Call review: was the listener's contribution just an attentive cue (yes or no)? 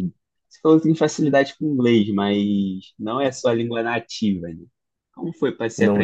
yes